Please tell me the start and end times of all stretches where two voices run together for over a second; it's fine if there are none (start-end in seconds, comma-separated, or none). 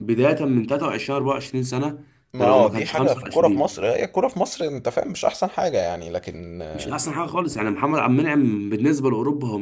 2.3-3.8